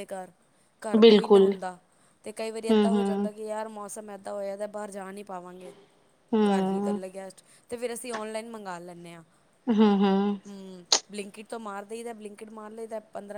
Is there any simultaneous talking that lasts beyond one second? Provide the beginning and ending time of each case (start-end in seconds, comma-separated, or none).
none